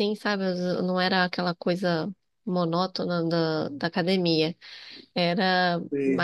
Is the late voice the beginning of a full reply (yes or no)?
no